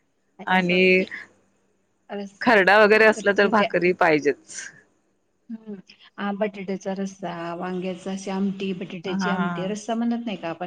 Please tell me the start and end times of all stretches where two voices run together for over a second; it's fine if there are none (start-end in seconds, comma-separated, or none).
none